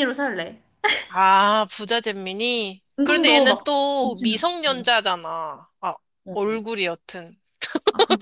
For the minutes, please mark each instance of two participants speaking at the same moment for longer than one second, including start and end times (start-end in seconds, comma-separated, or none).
3.0-4.9